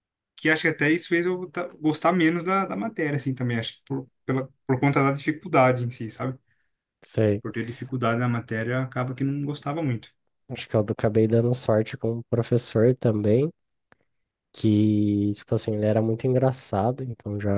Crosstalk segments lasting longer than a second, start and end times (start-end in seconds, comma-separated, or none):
none